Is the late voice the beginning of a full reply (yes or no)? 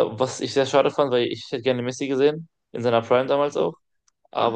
no